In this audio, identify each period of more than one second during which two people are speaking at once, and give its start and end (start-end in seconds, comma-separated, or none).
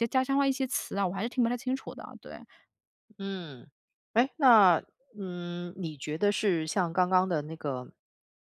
none